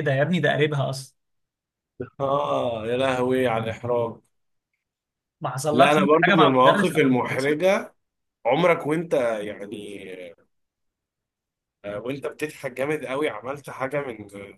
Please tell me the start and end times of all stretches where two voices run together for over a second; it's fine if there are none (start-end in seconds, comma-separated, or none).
5.7-7.6